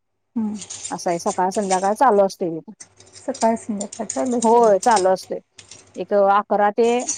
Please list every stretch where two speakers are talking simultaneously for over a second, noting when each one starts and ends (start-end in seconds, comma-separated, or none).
none